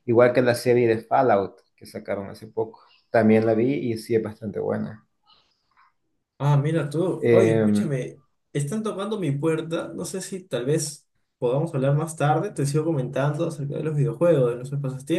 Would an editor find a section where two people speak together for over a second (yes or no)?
no